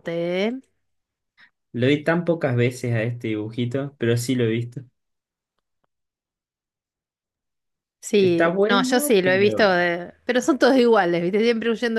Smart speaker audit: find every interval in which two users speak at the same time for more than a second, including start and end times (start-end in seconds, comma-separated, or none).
8.1-9.7